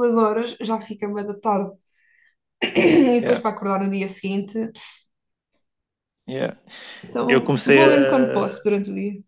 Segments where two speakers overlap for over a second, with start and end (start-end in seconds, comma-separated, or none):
7.3-8.6